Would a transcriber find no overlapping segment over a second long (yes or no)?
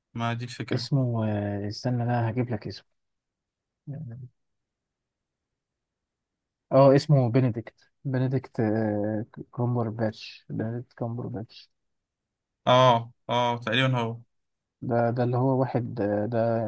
yes